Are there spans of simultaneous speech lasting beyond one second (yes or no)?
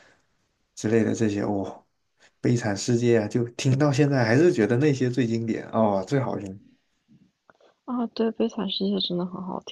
no